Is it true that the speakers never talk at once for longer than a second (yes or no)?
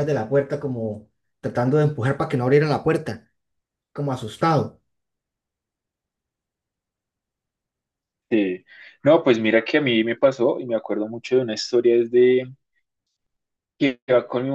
yes